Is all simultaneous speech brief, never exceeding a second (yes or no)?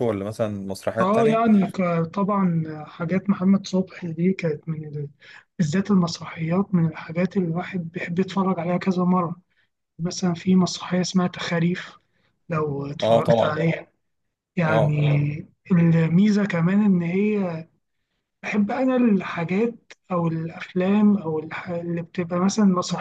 yes